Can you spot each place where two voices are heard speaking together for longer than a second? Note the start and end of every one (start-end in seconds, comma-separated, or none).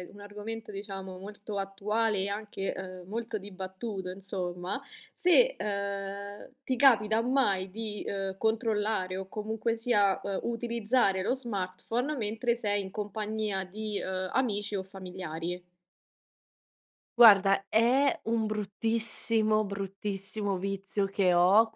none